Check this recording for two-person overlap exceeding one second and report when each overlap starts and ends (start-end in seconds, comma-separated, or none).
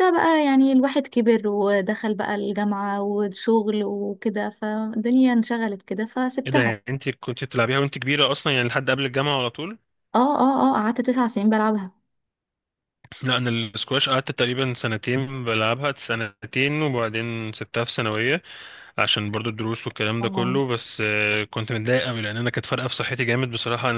none